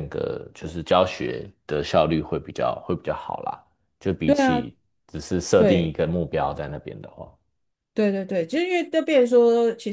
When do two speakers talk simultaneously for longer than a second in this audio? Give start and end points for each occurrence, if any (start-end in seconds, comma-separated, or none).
none